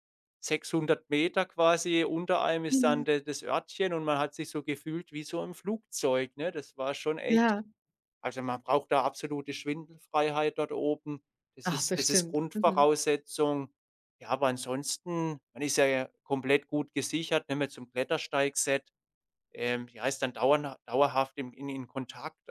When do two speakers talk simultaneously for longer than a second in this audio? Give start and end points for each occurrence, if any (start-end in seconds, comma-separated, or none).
11.6-12.9